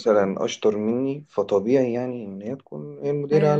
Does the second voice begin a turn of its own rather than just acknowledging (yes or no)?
yes